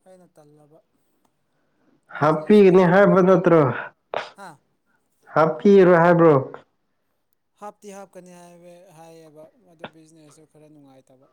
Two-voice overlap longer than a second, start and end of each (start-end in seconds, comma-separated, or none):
2.2-3.5